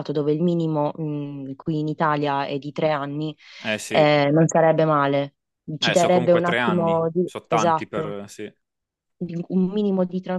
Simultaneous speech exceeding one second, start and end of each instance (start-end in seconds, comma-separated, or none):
5.8-8.1